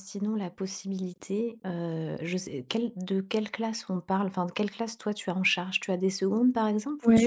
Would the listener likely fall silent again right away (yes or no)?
no